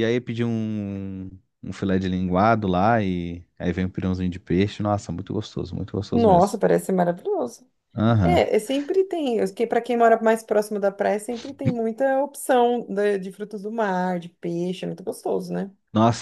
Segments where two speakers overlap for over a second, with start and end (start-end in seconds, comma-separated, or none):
none